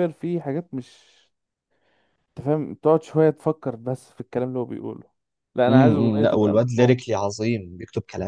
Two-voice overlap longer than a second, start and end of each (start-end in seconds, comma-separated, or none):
5.7-7.0